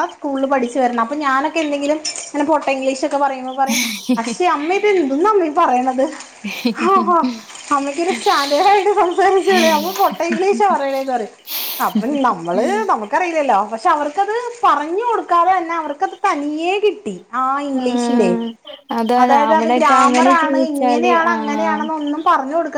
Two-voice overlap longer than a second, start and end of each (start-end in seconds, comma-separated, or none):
19.2-21.9